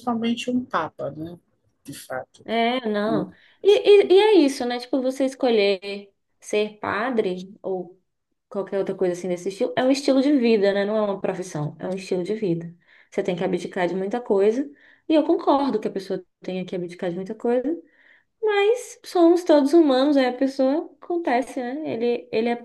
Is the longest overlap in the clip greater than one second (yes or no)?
no